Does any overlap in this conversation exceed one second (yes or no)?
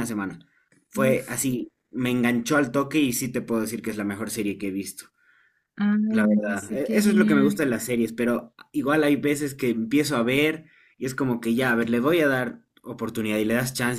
yes